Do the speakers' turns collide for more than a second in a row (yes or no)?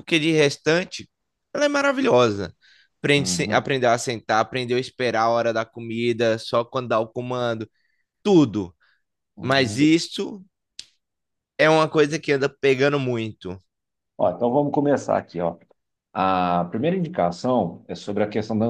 no